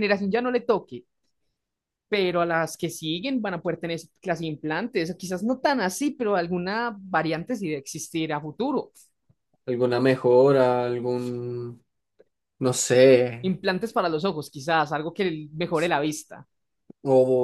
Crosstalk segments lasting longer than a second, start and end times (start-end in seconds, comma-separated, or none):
none